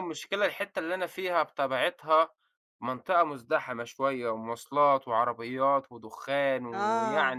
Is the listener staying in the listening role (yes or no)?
no